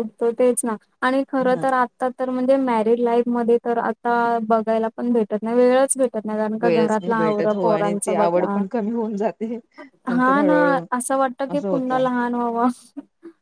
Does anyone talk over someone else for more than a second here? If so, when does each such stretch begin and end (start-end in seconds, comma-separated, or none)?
6.6-8.6